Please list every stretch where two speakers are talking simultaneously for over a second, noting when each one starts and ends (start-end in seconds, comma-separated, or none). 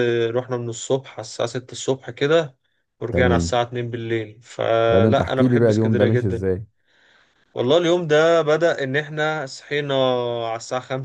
4.9-6.5